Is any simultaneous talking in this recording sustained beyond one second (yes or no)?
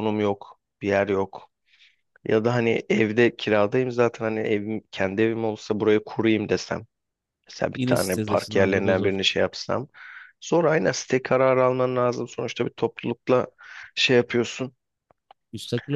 yes